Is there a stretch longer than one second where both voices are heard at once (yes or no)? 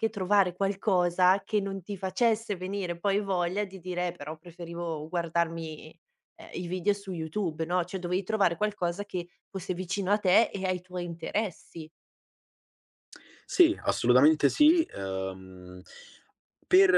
no